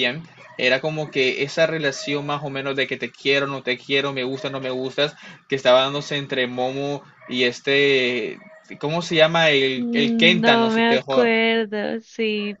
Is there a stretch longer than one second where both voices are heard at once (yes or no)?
yes